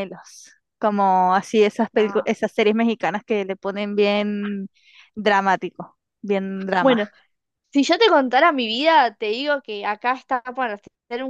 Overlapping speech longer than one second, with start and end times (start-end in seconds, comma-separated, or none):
none